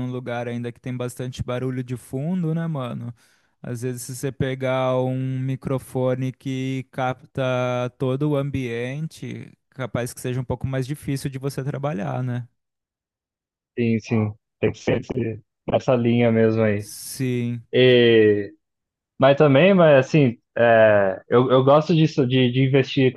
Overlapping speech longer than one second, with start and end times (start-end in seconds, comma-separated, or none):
none